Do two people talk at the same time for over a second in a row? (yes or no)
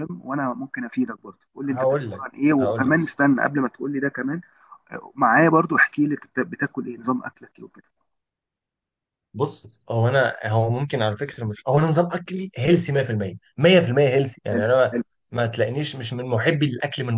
yes